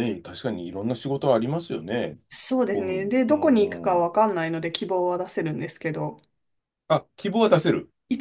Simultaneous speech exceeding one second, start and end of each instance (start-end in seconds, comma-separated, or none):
2.7-4.2